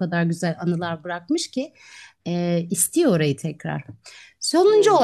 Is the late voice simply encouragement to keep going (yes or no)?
yes